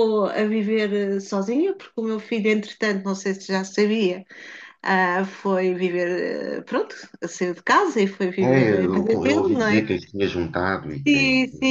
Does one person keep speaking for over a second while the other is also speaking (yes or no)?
yes